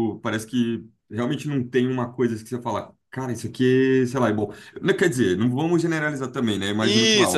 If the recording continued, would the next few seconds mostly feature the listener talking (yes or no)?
no